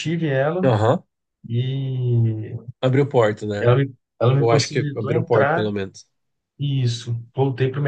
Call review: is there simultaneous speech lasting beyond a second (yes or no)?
yes